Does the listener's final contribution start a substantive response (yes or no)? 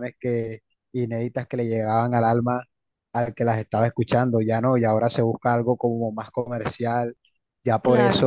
no